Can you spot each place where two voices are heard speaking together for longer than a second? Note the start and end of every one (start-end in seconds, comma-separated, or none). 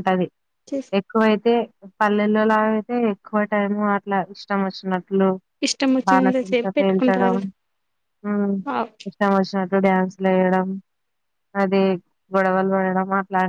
6.1-7.4